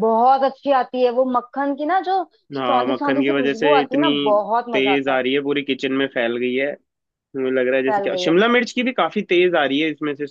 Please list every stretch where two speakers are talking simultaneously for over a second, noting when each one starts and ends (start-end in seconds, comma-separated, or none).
2.6-4.1